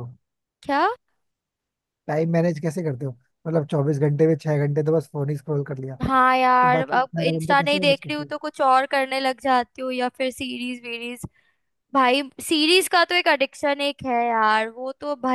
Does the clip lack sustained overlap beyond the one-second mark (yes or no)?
no